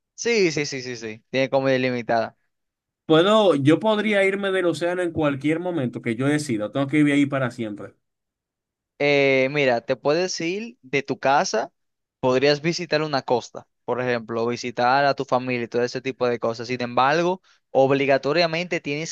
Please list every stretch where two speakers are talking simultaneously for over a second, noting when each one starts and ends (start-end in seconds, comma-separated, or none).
none